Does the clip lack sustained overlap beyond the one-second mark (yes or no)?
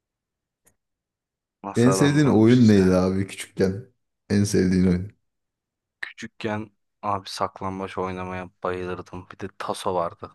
no